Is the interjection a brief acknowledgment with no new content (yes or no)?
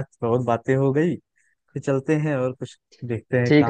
no